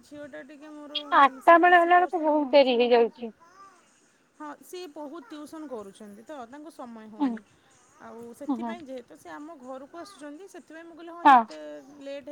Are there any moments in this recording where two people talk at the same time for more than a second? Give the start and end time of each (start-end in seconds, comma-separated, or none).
1.5-3.3